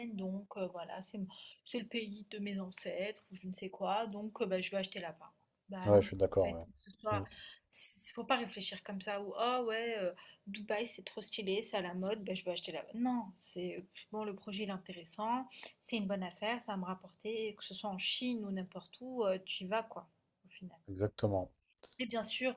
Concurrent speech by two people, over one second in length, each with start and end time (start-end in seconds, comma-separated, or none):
5.8-7.2